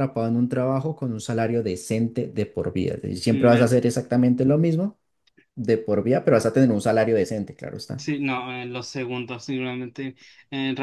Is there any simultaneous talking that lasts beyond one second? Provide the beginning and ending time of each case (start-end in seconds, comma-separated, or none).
none